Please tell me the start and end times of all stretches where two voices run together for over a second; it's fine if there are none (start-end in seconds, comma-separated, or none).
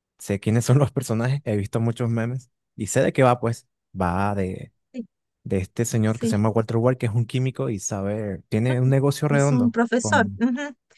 8.6-10.4